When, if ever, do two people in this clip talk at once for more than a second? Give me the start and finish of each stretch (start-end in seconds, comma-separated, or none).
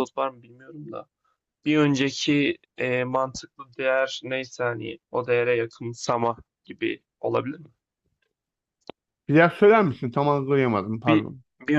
none